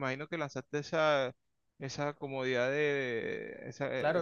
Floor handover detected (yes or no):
yes